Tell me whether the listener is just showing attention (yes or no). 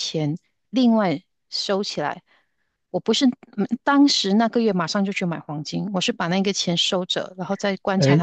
no